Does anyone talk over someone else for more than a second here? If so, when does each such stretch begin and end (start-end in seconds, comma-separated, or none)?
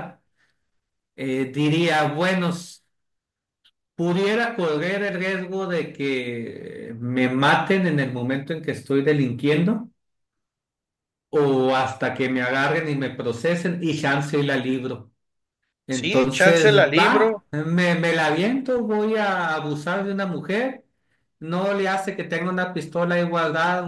15.9-17.4